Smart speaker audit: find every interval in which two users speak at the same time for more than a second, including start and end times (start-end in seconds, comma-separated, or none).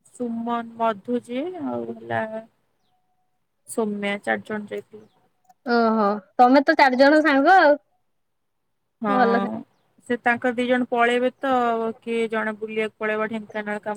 none